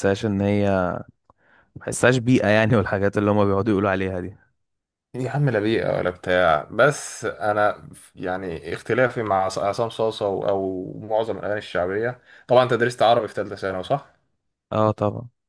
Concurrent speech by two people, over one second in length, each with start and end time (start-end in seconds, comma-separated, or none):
none